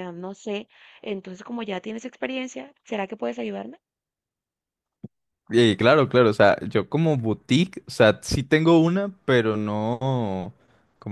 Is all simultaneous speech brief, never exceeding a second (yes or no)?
yes